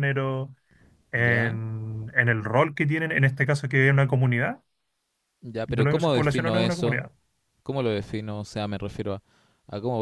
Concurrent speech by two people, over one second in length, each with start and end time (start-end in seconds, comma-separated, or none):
5.7-7.0